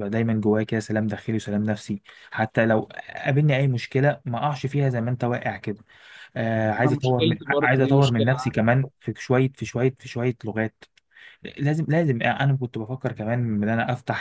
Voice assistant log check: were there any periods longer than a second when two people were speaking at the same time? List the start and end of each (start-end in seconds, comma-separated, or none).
6.8-8.6